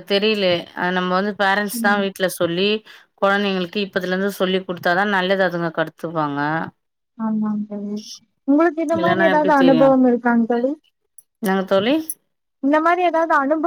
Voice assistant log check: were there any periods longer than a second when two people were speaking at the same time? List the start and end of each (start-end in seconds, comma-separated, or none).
none